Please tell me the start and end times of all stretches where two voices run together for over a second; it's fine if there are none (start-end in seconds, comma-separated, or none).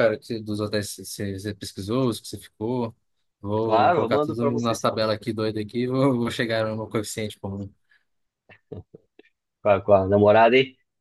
3.6-5.0